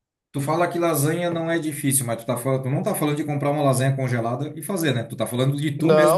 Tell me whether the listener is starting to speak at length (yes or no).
yes